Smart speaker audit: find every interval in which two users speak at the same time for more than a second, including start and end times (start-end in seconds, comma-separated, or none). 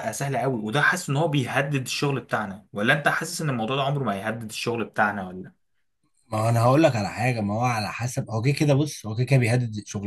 none